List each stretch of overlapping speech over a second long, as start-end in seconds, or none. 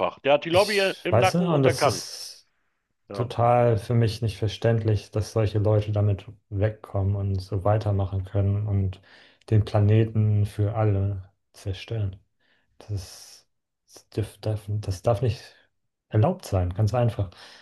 0.5-2.0